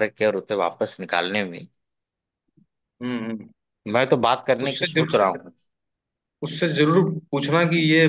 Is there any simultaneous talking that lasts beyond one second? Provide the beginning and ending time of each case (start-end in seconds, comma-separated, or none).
none